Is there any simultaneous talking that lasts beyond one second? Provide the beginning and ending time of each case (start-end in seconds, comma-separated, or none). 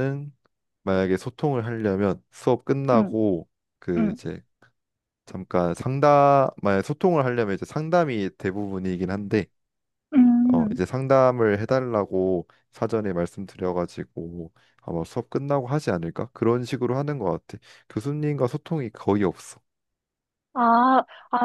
none